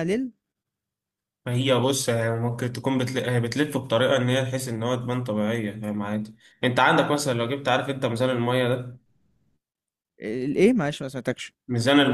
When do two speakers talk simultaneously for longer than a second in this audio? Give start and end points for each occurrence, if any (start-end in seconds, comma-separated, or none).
none